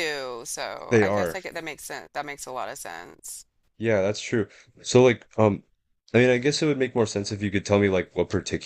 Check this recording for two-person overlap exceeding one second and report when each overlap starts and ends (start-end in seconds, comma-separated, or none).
none